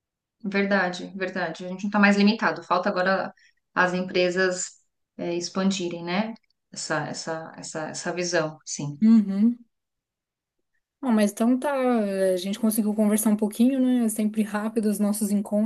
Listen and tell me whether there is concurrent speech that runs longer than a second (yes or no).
no